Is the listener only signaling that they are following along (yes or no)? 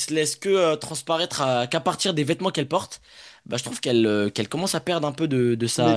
no